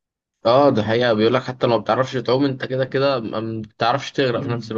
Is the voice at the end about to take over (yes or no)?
yes